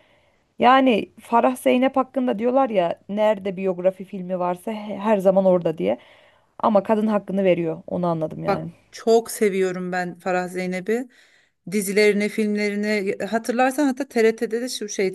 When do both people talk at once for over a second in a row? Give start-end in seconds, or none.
none